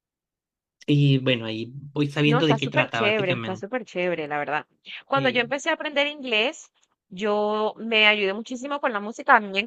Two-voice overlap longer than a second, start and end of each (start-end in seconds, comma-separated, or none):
2.2-3.6